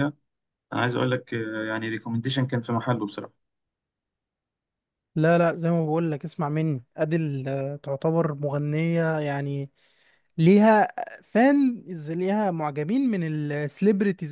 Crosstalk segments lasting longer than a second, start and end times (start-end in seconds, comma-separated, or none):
none